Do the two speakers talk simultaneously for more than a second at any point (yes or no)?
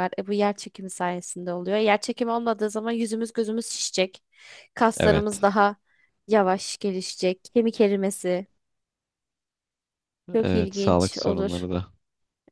yes